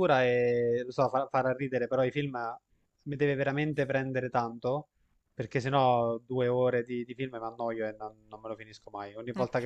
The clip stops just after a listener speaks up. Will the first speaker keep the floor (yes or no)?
yes